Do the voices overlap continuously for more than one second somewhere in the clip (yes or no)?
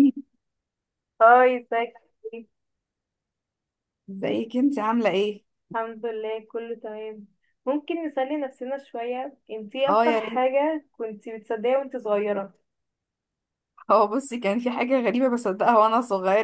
no